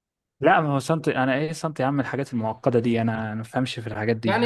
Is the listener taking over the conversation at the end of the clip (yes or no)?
yes